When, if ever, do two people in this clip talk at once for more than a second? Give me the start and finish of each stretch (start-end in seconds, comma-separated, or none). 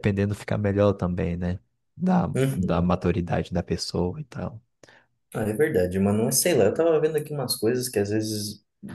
none